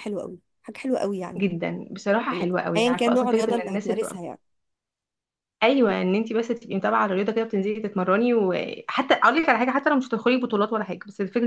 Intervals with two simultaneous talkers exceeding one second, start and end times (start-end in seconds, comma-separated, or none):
2.3-3.9